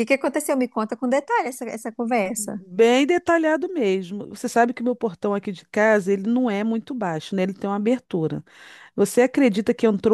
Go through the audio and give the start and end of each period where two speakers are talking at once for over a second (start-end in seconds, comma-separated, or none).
none